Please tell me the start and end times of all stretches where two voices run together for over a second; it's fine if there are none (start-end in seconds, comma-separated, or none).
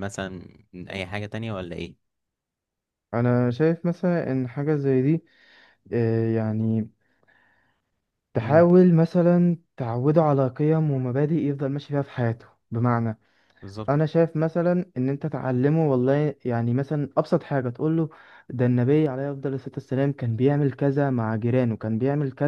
none